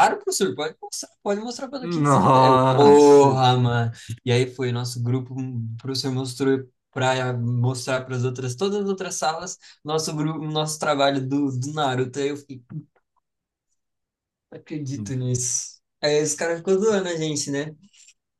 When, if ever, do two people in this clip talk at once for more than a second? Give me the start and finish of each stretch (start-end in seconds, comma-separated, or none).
2.0-3.4